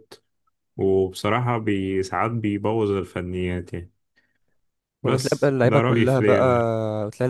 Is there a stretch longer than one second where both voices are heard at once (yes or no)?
yes